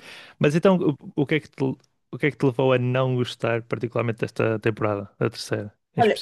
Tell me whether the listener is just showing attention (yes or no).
no